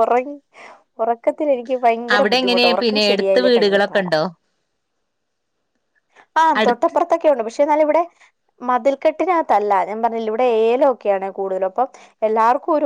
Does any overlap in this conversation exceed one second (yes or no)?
yes